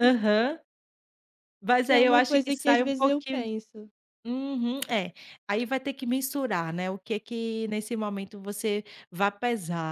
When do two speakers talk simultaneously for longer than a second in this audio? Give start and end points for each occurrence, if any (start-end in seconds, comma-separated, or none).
1.9-3.4